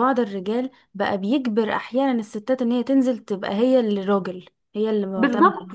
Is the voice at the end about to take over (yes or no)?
yes